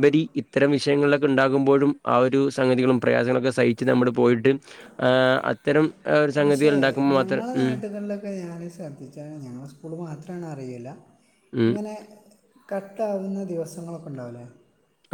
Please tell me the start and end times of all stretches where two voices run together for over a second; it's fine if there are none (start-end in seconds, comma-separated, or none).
none